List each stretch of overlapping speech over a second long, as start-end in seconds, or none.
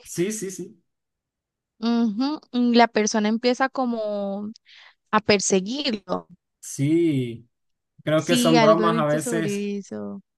8.1-9.7